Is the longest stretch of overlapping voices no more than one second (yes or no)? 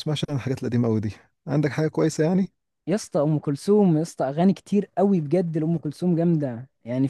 yes